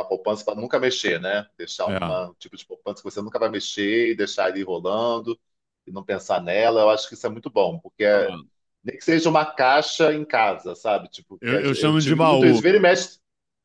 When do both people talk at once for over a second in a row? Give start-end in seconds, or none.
11.4-12.7